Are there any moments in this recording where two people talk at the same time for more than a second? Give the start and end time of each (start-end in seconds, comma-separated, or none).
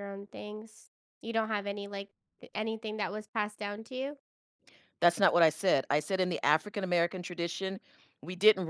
none